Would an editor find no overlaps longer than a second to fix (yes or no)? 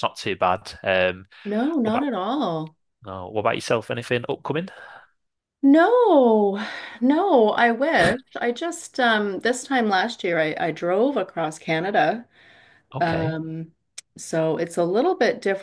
yes